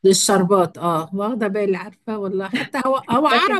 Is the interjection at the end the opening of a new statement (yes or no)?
no